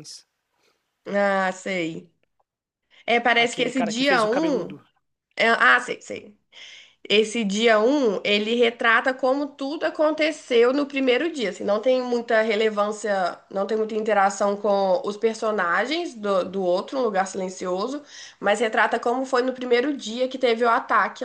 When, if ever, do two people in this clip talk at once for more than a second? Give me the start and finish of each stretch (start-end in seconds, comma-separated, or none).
3.4-4.7